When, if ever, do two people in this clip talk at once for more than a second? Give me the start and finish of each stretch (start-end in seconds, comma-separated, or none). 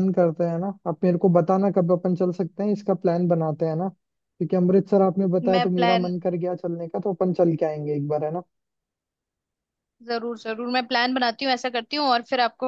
none